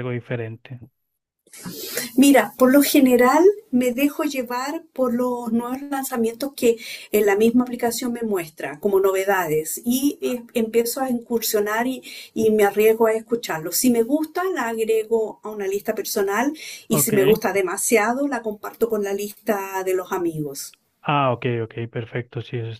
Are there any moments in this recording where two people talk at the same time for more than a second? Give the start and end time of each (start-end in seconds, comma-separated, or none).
none